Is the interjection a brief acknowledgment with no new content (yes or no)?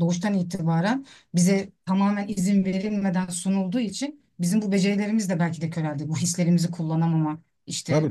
no